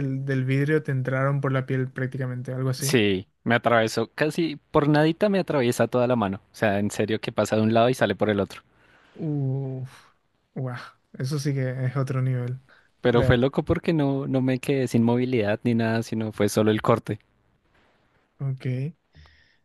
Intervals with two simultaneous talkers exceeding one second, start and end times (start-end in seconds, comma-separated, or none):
none